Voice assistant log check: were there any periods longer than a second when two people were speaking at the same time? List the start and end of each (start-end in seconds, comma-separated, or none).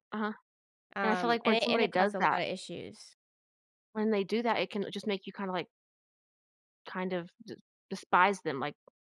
1.0-2.4